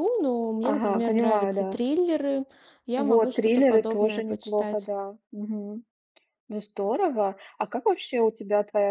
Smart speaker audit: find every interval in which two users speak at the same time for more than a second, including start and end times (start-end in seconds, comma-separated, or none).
0.6-1.8, 3.0-4.9